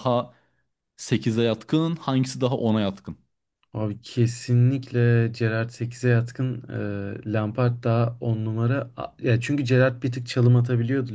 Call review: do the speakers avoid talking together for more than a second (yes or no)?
yes